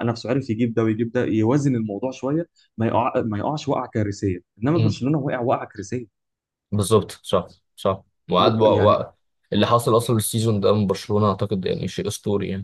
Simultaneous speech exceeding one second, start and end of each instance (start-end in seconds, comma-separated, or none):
none